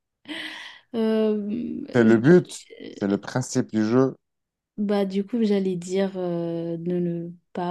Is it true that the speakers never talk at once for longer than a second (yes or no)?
no